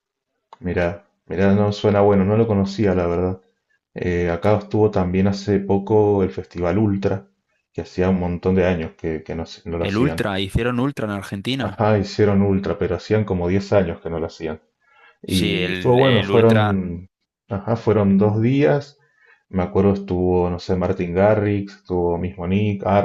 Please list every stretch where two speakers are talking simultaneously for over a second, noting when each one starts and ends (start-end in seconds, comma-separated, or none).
15.2-16.8